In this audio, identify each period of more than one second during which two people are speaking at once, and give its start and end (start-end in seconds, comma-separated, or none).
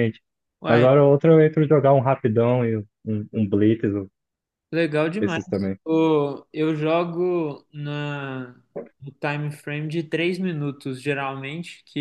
none